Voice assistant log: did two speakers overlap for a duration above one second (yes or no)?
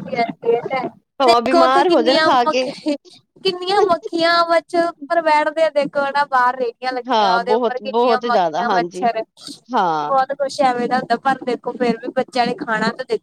yes